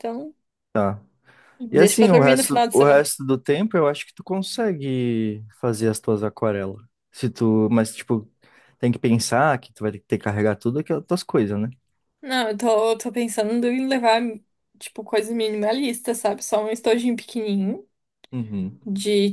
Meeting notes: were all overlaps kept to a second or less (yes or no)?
no